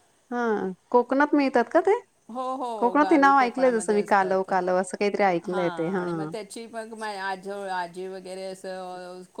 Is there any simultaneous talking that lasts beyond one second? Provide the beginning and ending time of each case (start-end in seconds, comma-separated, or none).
2.8-4.5